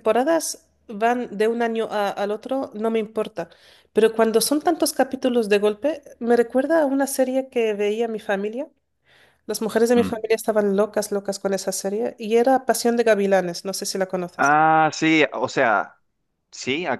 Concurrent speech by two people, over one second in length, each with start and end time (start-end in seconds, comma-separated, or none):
none